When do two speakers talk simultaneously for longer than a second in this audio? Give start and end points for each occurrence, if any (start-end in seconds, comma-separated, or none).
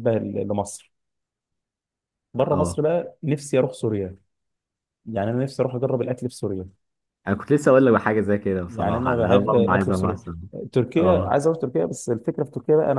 8.7-10.2